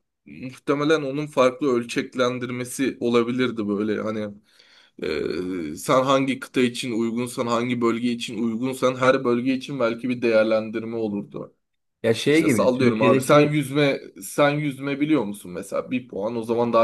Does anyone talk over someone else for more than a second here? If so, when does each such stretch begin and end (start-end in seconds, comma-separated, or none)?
12.3-13.6